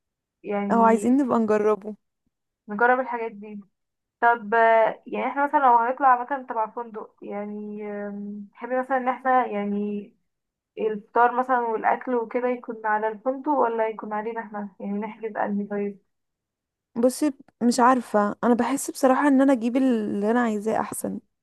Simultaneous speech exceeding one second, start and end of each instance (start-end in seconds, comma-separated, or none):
none